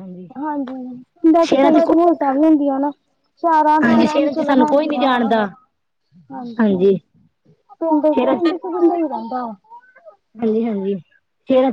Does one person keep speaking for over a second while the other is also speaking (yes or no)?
yes